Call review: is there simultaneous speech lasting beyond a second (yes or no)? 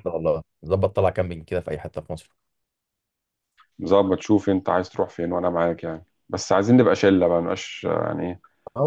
no